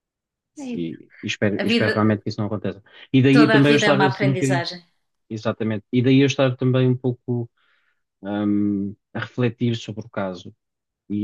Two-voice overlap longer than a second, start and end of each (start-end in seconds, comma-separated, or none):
3.3-4.7